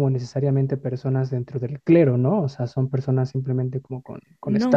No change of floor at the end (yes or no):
no